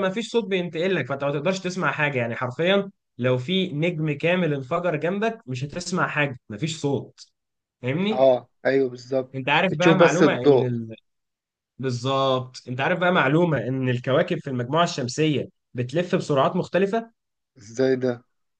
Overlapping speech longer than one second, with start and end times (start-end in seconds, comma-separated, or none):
9.3-10.8